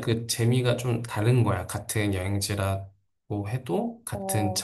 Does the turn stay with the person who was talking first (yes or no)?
yes